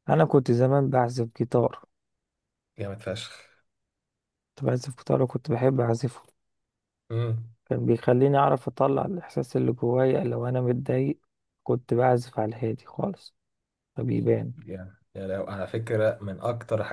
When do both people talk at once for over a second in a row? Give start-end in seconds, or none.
none